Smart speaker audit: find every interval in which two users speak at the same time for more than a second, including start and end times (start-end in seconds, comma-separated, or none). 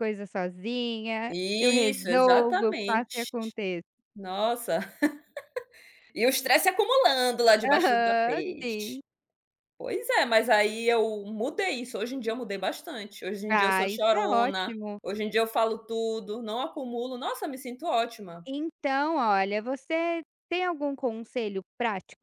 1.3-3.3, 7.6-9.0, 13.5-15.0